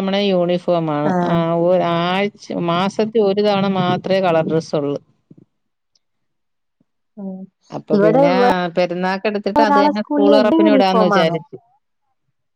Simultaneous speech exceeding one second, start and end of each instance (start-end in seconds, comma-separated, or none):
9.6-11.3